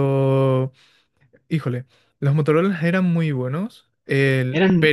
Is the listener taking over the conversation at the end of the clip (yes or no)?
no